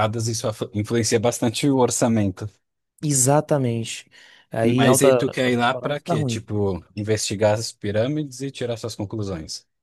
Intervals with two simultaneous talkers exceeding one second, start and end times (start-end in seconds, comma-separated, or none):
4.8-6.4